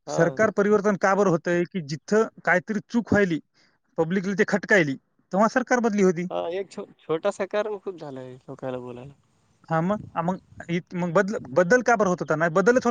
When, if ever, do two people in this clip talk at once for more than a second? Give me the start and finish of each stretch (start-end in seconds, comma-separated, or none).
none